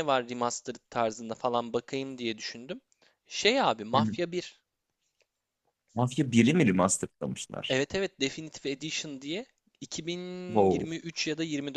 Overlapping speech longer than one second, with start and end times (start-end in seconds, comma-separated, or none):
none